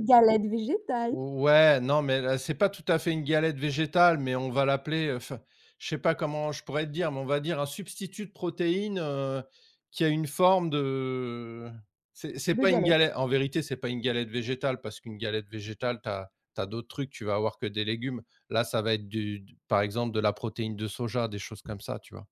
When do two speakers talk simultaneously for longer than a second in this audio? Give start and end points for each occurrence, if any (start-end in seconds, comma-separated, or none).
none